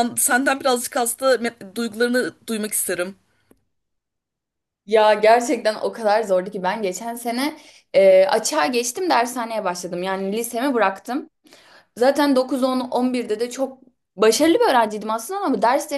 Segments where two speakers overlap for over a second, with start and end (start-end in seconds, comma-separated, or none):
none